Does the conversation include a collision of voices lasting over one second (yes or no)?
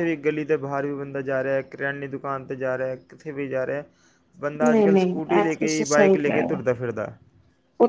yes